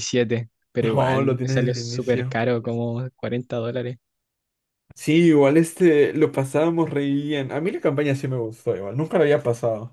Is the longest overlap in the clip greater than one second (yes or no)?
yes